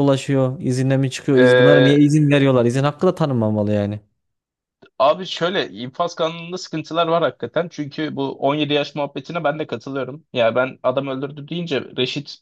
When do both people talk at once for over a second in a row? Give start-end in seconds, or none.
none